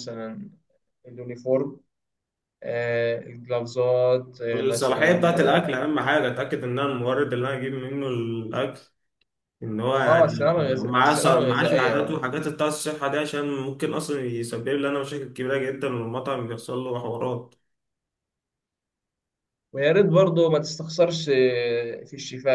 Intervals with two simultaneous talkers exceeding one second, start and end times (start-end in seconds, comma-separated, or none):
4.5-5.9, 10.0-12.2